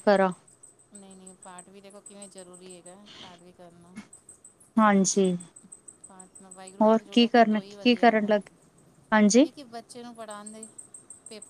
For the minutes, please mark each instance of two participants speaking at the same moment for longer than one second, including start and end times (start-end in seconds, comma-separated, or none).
6.8-8.4